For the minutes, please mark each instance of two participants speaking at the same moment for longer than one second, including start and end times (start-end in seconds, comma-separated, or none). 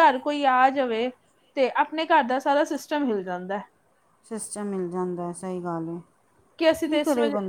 none